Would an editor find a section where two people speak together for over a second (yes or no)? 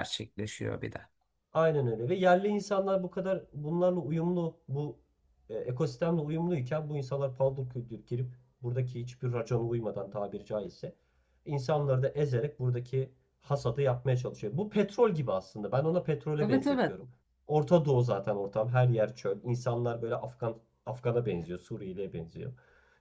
no